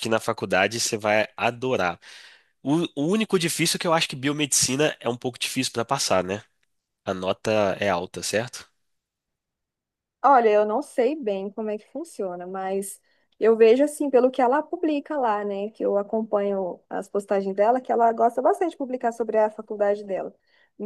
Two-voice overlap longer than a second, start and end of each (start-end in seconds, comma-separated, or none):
none